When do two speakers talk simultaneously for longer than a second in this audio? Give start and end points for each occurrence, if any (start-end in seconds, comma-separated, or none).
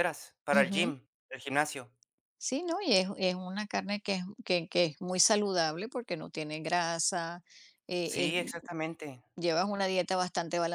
none